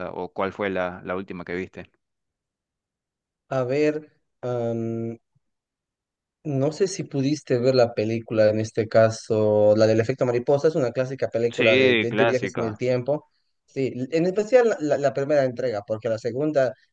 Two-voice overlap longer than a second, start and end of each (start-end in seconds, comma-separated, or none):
11.5-12.8